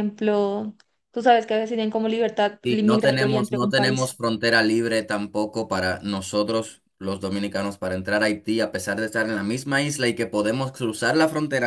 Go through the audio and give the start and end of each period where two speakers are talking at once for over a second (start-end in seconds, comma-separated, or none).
2.6-4.1